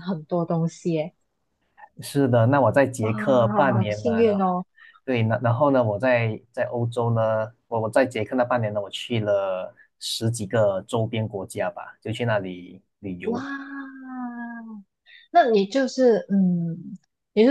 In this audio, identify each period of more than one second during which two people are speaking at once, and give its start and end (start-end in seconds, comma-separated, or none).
3.0-4.6